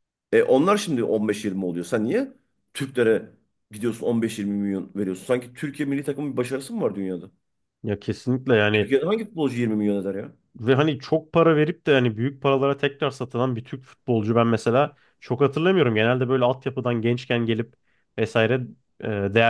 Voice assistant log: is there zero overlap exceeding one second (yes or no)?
yes